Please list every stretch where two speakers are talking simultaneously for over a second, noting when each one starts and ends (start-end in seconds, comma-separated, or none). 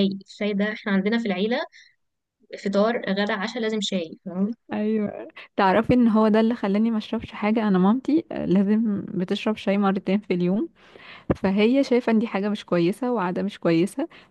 none